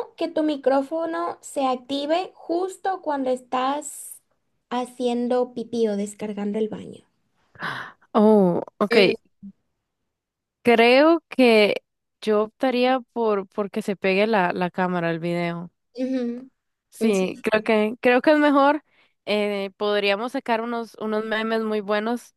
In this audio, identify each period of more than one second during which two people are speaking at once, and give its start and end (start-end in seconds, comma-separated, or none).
none